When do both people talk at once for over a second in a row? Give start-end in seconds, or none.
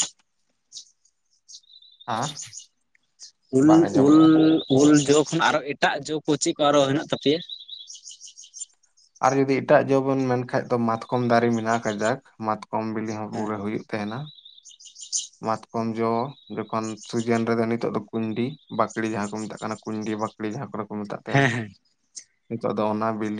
none